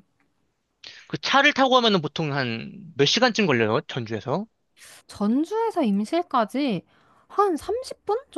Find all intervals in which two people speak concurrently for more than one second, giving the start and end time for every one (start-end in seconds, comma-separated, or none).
none